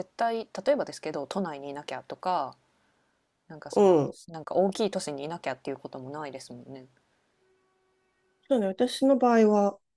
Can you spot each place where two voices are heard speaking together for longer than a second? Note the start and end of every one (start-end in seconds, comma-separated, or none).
none